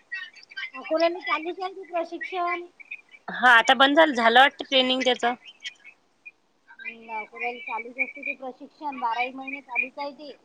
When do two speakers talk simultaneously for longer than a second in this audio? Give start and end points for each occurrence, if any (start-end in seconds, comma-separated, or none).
none